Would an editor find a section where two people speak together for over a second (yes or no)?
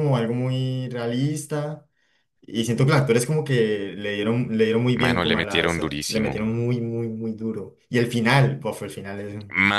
yes